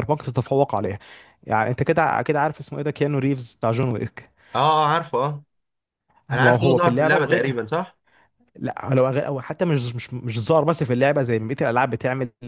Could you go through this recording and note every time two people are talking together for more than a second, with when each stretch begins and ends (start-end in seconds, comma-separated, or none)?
6.3-7.5